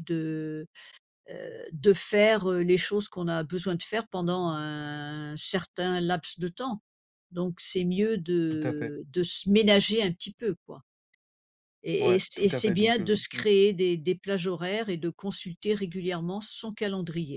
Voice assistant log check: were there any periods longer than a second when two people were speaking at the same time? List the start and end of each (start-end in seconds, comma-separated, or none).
12.0-13.4